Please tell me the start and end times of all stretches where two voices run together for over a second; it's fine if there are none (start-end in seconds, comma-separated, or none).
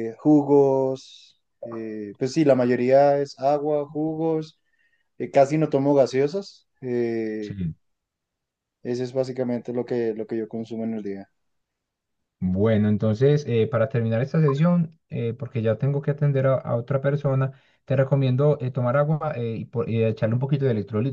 none